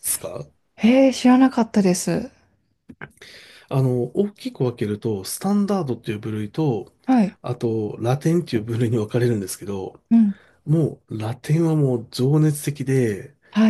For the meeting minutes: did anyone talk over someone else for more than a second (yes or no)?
no